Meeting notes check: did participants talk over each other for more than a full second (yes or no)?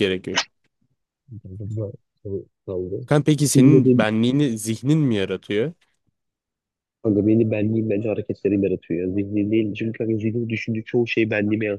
no